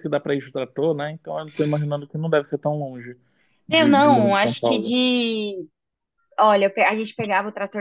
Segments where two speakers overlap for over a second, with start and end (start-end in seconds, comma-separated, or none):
3.7-5.0